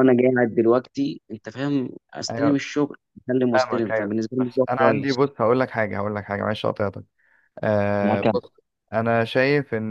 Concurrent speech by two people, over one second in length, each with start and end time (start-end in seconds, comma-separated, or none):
3.5-5.2